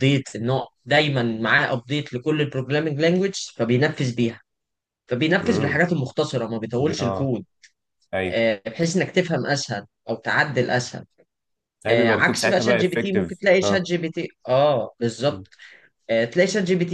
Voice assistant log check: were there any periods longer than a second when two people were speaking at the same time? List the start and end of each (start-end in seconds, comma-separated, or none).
11.9-13.9